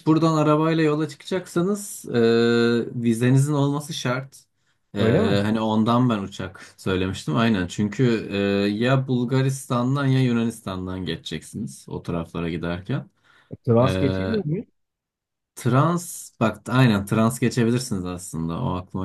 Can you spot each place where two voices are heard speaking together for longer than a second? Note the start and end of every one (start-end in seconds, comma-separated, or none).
none